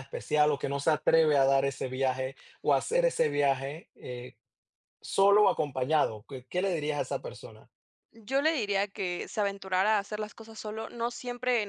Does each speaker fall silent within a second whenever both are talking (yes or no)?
yes